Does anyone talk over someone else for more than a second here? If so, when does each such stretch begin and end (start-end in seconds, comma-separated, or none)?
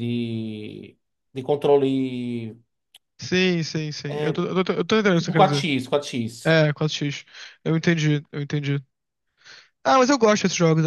none